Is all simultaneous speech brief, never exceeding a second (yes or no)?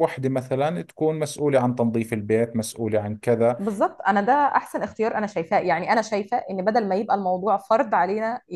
yes